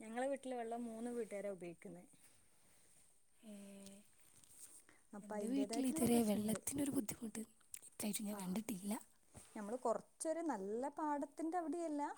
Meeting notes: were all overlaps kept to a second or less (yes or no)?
no